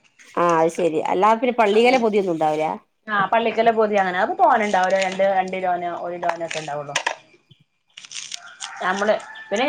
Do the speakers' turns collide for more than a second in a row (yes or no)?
no